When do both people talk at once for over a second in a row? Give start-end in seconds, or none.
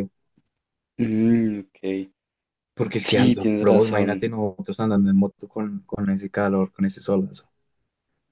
3.0-4.3